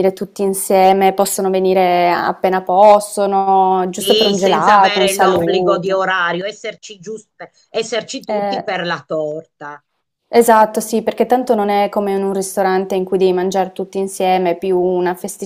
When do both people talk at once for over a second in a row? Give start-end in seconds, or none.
4.0-6.0